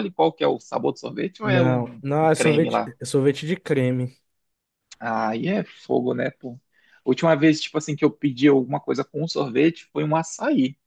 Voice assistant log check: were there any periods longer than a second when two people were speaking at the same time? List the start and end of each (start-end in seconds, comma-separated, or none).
1.4-2.9